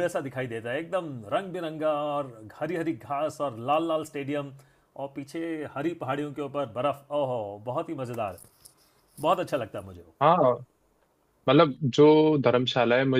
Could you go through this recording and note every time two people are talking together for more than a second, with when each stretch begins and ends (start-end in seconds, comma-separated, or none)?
none